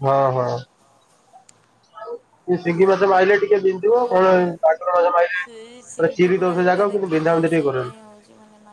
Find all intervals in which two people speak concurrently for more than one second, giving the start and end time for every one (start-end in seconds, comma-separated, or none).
5.4-6.8